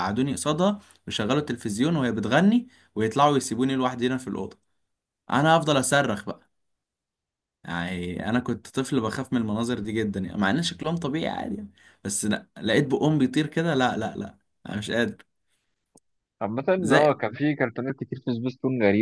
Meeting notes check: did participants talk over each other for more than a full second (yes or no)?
no